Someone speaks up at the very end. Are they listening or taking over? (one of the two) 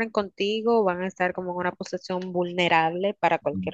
taking over